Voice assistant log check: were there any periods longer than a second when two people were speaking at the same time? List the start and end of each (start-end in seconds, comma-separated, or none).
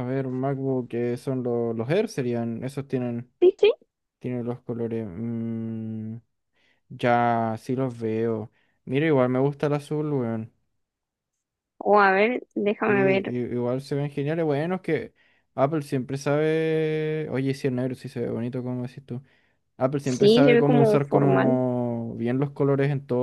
20.0-21.6